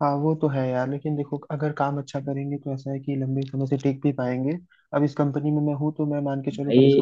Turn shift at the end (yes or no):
no